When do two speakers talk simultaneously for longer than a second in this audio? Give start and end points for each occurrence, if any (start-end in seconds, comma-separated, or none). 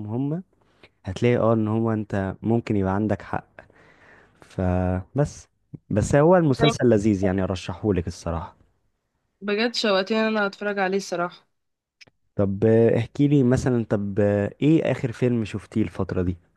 none